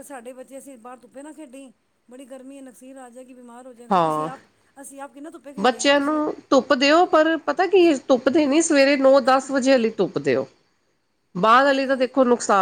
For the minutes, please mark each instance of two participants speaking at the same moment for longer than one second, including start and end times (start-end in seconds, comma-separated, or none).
none